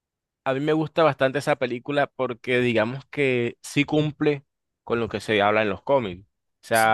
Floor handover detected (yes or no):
no